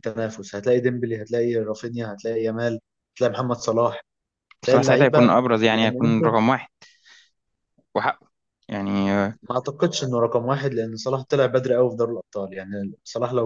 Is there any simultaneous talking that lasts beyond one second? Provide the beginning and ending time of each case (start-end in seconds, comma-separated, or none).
4.6-6.4